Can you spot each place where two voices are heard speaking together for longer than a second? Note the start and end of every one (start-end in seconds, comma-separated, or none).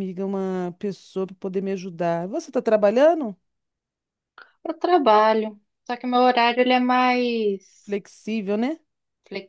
none